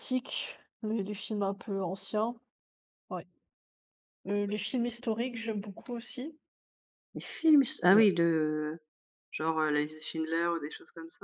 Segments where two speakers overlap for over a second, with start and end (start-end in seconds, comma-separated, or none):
none